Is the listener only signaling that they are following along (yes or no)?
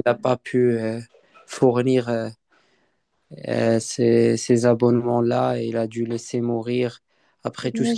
yes